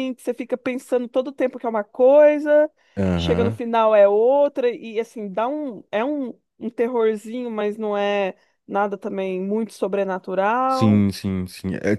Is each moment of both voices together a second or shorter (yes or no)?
yes